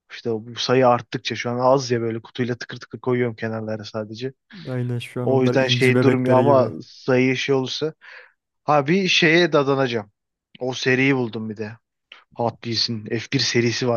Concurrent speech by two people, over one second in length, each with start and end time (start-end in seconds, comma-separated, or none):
5.2-6.7